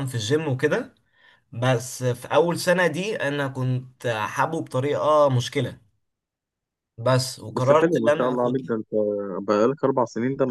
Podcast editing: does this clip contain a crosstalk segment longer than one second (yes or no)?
yes